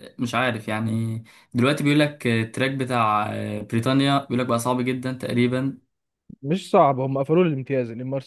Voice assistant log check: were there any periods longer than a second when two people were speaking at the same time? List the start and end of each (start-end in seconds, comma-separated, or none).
none